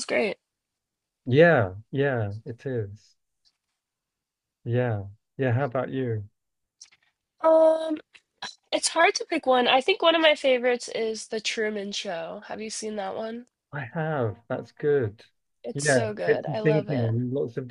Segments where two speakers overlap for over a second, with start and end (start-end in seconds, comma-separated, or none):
15.7-17.1